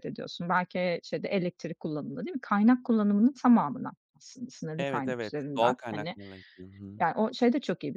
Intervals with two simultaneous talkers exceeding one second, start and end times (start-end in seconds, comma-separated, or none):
4.8-6.2